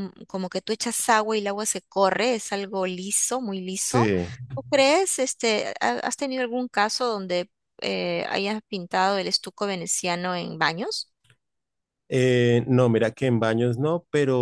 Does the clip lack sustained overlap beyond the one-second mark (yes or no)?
yes